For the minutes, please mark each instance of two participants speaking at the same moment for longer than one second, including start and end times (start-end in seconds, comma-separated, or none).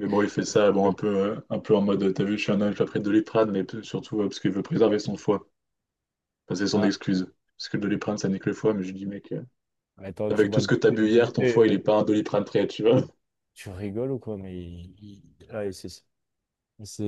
10.3-11.8